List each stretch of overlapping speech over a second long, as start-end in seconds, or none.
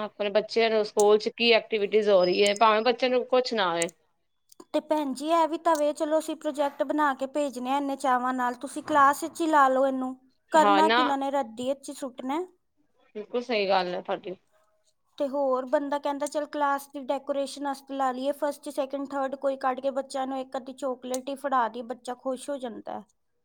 none